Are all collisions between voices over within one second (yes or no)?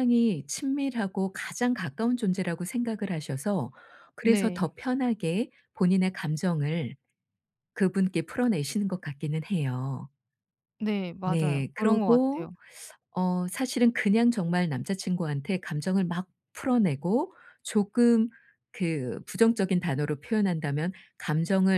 no